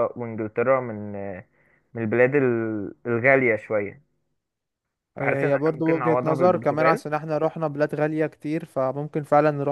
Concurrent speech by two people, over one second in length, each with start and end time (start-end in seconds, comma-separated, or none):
5.2-7.0